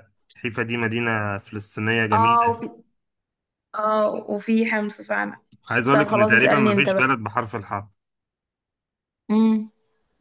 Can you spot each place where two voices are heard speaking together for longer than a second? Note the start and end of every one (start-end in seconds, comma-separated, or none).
5.9-7.2